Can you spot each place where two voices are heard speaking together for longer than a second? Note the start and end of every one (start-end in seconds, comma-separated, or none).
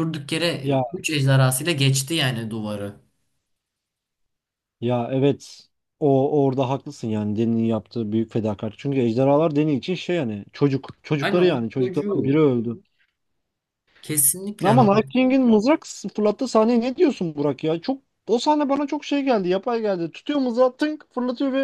11.2-12.4